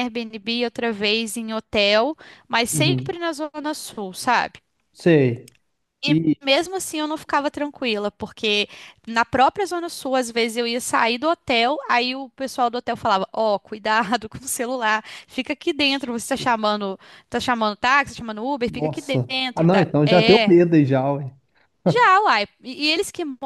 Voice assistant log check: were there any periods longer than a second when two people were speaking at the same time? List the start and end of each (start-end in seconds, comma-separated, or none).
18.7-20.6